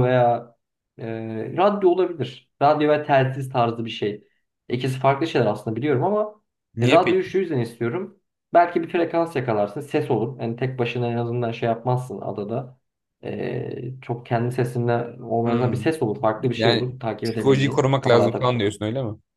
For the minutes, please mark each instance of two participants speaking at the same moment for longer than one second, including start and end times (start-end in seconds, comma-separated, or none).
16.6-18.6